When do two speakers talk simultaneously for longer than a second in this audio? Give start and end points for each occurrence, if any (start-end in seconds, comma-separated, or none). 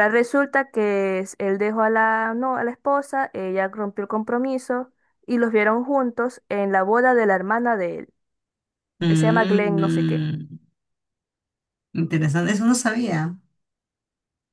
9.1-10.3